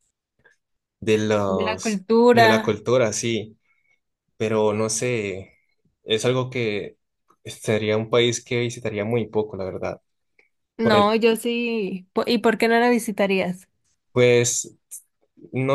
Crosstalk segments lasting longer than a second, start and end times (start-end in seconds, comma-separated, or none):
1.5-2.8